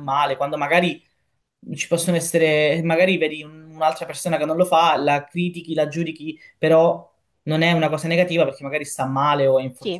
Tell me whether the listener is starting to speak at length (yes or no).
yes